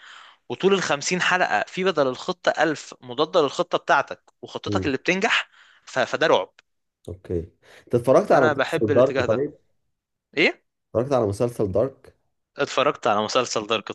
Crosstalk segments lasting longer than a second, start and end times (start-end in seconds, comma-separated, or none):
8.3-9.5